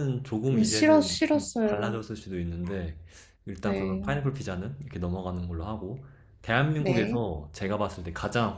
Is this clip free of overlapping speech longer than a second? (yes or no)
no